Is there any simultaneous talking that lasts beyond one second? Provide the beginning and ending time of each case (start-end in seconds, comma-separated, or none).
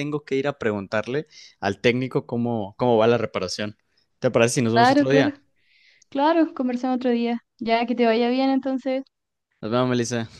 none